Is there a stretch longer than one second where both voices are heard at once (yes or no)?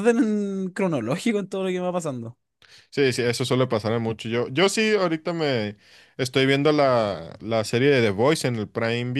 no